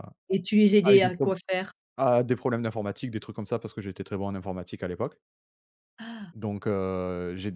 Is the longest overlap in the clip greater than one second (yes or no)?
no